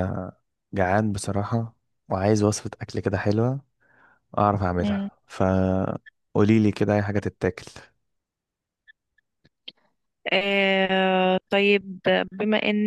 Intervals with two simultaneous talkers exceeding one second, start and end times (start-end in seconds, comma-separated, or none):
none